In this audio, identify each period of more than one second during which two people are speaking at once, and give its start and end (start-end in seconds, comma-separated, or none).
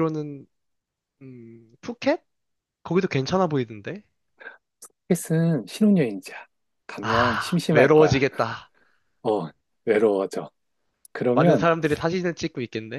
7.0-8.2